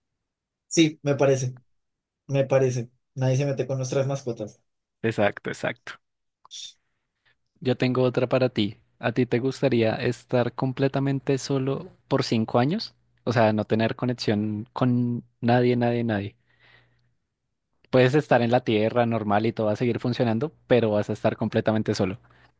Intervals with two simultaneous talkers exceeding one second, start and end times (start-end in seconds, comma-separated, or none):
none